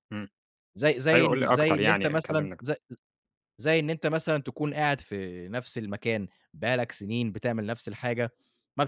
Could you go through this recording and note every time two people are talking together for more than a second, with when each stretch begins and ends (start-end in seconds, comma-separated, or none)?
1.1-2.6